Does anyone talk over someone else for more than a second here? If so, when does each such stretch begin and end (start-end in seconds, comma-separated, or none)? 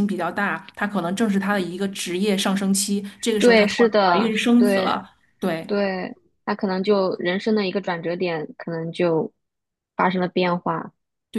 3.4-5.0